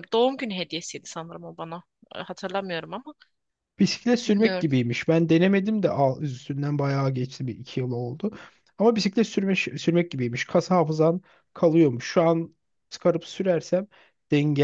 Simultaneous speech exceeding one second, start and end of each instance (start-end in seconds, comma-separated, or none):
none